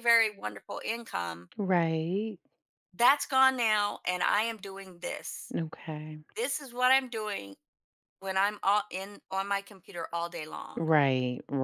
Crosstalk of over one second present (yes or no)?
no